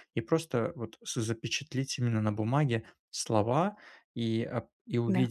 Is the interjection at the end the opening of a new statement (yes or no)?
no